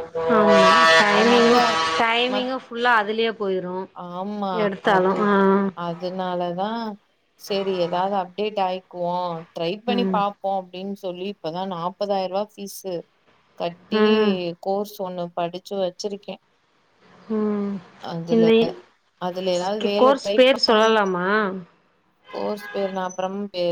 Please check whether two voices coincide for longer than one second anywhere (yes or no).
yes